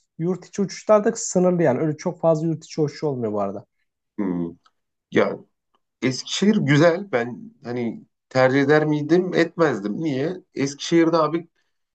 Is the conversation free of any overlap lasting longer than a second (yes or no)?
yes